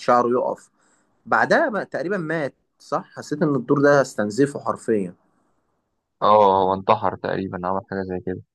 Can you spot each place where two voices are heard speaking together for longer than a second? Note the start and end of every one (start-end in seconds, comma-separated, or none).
none